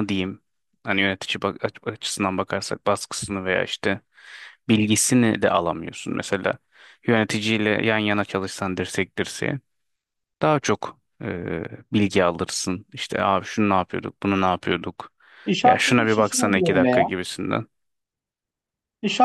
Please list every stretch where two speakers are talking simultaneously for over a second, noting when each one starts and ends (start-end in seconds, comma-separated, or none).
15.6-17.1